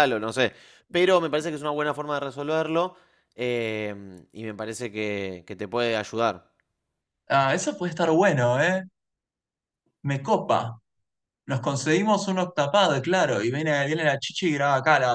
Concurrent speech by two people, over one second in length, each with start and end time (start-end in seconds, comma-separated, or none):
none